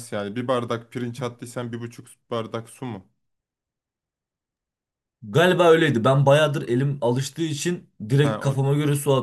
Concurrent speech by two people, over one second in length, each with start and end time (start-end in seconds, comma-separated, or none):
none